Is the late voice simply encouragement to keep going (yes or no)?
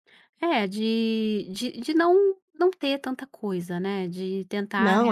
no